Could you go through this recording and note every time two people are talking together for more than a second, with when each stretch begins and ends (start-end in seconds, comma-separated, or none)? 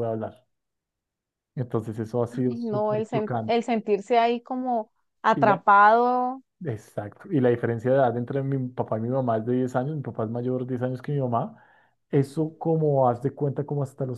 2.3-3.6